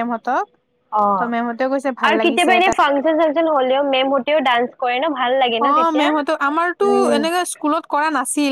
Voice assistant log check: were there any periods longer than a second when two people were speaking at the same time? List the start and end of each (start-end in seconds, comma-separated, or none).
none